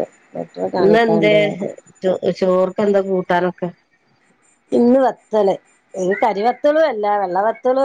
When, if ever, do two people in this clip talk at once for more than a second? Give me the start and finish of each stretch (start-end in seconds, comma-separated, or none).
none